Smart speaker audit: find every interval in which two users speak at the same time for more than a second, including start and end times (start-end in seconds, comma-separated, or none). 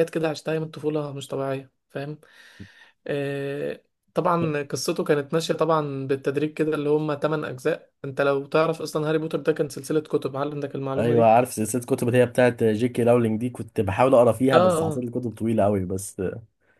none